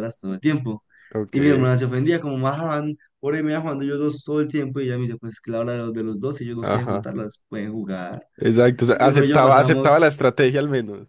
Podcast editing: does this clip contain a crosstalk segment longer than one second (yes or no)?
yes